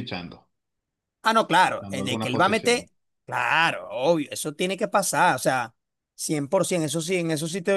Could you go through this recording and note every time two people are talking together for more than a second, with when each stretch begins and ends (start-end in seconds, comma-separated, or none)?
1.7-2.9